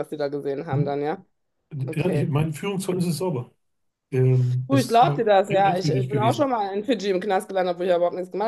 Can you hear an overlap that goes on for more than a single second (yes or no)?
yes